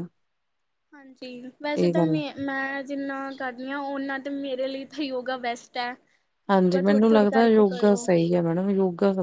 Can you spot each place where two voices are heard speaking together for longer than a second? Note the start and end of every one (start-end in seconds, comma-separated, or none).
6.6-8.0